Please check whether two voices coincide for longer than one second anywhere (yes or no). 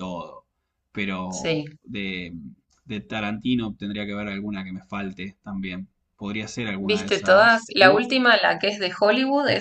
yes